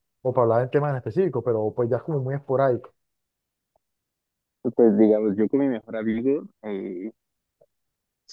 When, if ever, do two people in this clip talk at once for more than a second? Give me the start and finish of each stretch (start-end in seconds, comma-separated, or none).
none